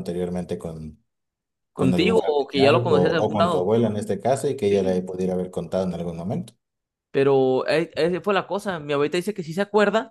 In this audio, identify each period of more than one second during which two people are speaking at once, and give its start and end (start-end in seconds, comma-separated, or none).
1.8-3.7